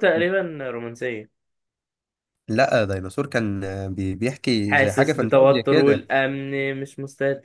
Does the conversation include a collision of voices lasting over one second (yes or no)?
yes